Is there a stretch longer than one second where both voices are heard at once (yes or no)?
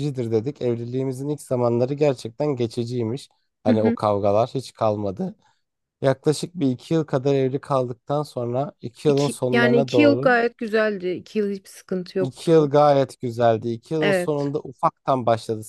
yes